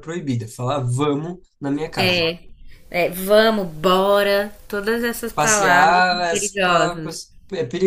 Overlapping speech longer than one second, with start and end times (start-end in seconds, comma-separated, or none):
5.3-7.1